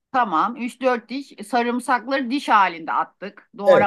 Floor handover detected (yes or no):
yes